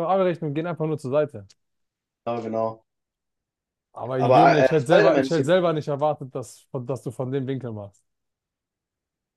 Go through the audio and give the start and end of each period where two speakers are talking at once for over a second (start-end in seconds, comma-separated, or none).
4.2-5.5